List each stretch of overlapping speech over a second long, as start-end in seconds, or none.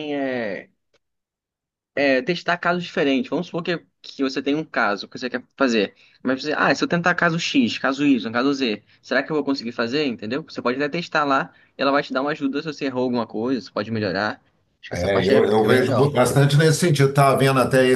14.9-16.1